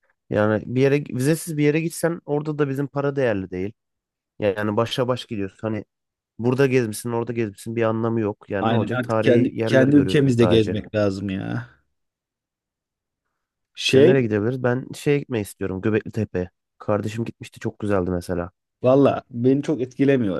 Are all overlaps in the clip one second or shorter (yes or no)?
no